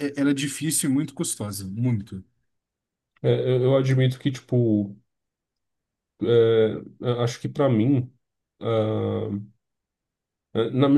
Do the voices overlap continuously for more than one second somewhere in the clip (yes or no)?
no